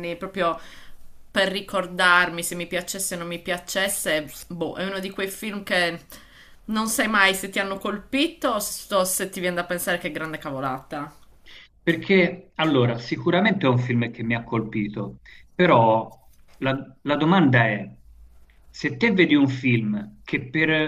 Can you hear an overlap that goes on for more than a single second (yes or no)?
no